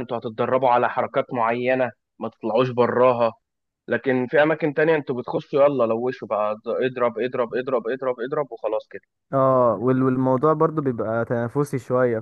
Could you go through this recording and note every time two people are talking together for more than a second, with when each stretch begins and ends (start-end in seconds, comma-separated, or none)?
none